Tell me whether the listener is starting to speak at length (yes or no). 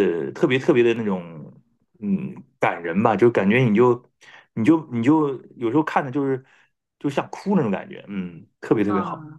yes